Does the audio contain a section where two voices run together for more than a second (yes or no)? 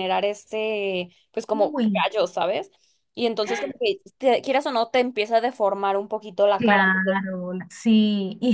no